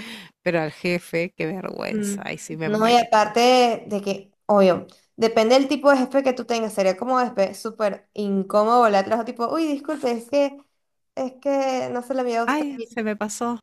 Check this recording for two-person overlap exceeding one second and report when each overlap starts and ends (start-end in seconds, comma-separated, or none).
1.9-3.3